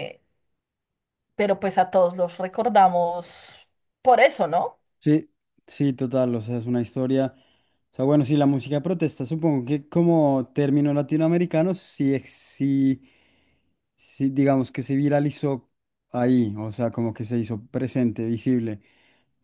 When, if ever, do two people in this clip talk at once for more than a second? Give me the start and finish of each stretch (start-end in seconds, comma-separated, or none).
none